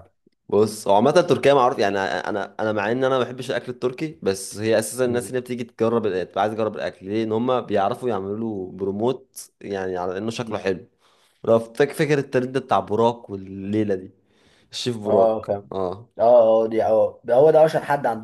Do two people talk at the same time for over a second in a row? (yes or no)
no